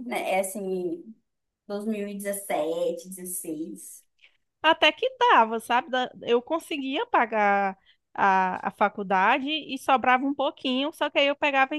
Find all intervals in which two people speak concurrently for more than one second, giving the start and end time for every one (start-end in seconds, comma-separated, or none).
none